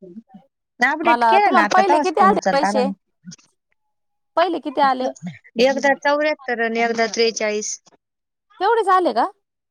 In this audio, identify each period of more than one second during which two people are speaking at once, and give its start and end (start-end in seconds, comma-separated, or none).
1.0-2.9